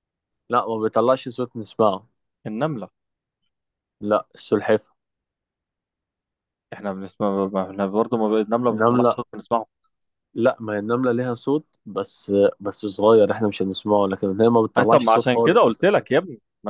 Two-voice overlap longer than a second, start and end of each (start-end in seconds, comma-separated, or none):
14.8-16.1